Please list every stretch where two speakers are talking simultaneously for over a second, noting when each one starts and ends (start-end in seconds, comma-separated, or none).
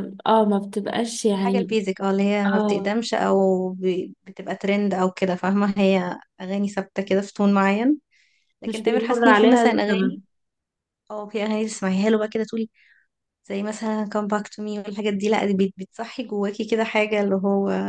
8.7-10.2